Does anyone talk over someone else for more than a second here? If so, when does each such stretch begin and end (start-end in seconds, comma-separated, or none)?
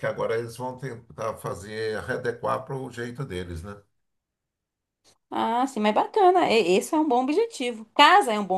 none